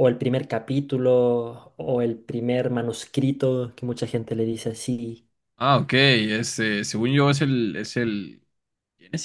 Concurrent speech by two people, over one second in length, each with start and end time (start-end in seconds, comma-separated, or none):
none